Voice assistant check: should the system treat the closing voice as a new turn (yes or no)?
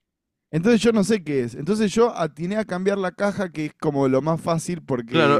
yes